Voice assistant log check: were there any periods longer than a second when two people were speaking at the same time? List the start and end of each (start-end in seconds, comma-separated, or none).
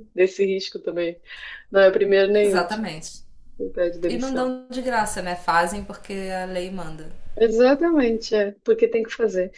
none